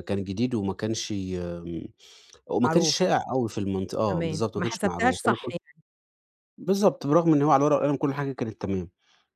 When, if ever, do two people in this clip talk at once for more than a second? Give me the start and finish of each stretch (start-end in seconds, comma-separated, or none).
4.1-5.6